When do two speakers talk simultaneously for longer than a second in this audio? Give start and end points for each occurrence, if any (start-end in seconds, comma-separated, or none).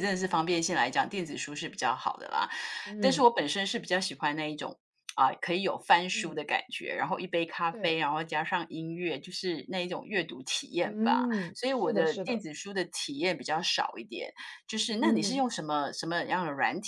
10.8-12.4